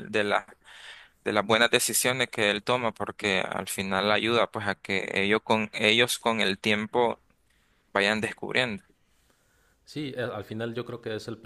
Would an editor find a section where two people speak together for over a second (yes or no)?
no